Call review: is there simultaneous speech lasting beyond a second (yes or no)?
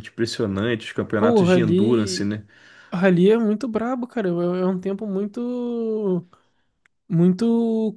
yes